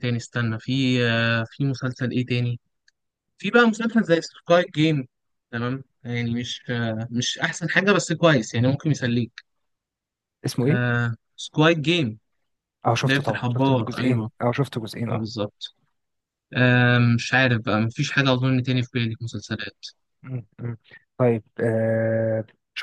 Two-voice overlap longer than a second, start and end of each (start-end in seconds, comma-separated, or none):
13.0-14.3